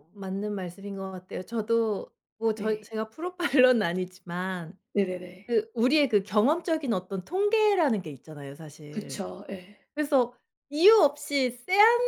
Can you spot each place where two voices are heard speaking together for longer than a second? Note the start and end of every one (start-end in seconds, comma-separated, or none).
none